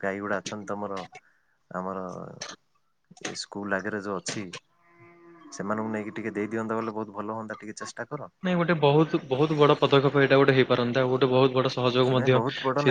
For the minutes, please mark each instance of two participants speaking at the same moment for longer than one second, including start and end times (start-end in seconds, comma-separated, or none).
none